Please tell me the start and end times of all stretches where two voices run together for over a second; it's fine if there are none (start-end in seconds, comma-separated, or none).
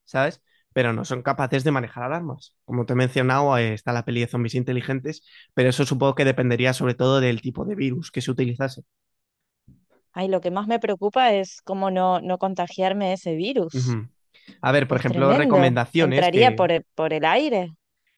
14.9-16.6